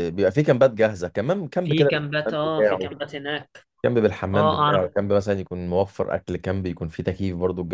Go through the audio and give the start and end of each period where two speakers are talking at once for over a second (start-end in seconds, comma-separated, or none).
1.6-2.9